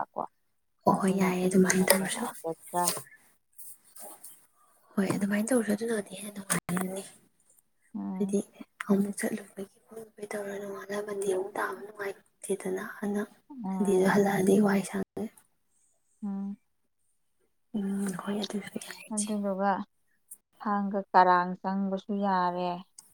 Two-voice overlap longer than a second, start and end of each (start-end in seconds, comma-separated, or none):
0.9-2.2